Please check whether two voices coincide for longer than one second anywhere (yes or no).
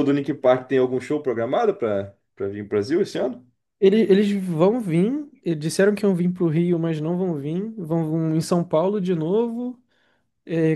no